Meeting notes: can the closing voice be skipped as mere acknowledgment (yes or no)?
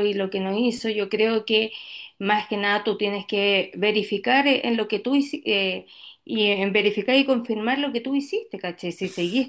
yes